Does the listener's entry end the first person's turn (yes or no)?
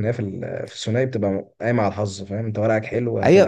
yes